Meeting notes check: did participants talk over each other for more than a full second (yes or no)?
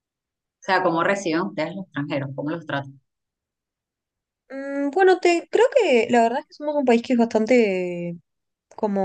no